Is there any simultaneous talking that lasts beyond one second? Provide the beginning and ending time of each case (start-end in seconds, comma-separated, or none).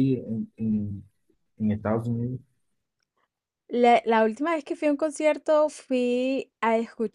none